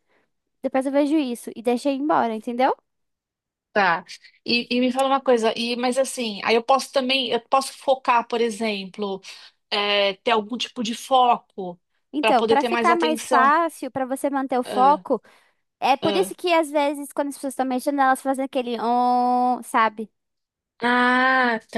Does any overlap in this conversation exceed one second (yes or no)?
yes